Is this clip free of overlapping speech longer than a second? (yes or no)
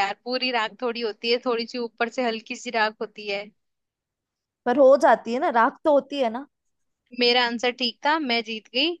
yes